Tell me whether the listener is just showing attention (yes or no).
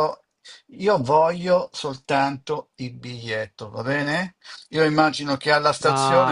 yes